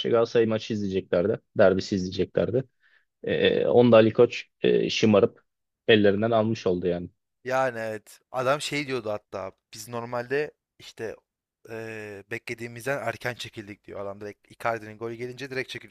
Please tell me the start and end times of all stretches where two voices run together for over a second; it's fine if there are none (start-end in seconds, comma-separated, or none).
none